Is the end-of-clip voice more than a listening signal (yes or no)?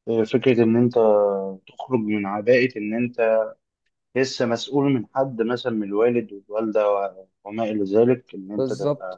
no